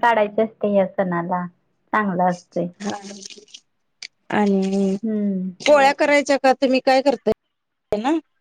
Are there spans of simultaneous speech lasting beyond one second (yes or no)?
no